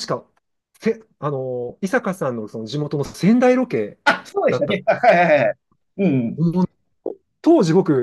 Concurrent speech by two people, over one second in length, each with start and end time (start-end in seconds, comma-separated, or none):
none